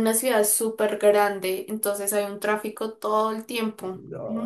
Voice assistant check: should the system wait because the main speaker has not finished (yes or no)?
no